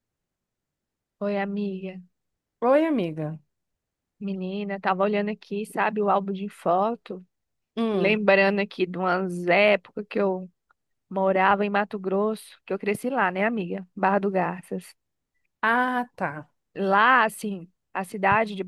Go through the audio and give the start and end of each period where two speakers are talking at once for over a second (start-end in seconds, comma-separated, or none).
none